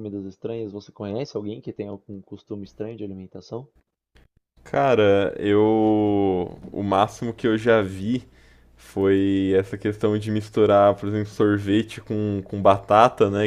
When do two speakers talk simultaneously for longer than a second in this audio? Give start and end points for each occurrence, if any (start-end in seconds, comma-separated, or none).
none